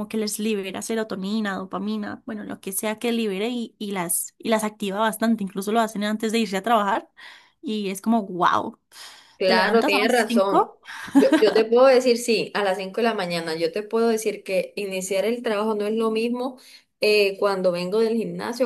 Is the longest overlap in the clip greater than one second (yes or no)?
yes